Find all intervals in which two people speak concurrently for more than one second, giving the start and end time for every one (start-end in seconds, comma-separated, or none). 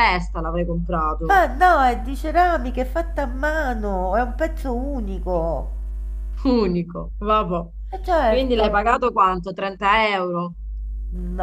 none